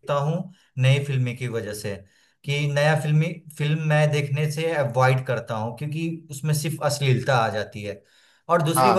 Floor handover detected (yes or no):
yes